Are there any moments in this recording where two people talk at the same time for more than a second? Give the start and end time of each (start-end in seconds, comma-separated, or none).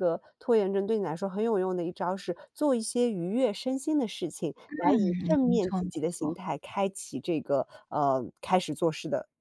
4.7-6.4